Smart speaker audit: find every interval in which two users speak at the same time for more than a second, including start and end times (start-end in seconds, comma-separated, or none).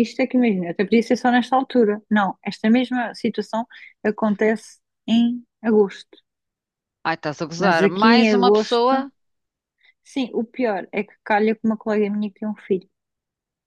7.6-8.9